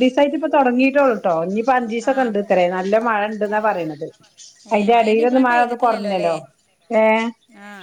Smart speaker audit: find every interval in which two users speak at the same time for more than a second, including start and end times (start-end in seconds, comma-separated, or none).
4.8-6.3